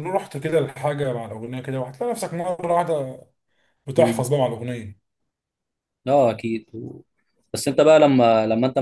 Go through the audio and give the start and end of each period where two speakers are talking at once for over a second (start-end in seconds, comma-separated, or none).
none